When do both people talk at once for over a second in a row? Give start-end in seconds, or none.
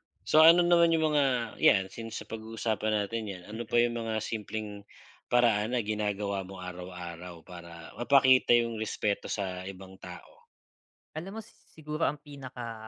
none